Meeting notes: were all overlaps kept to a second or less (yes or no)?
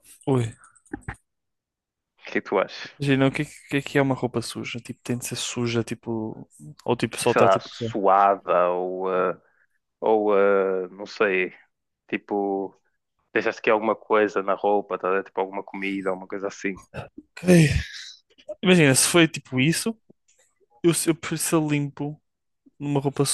yes